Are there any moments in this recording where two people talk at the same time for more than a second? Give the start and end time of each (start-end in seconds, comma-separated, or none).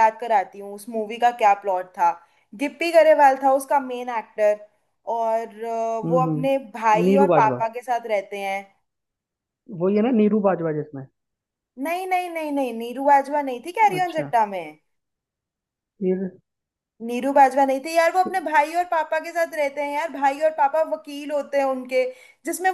6.0-7.6